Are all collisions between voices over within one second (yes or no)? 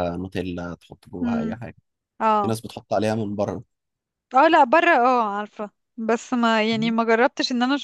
yes